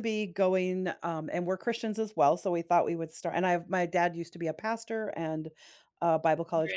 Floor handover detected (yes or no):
no